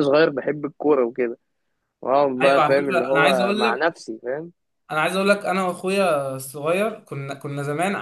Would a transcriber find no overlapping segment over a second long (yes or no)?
no